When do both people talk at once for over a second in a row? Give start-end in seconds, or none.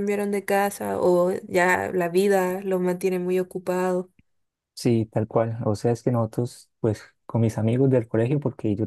none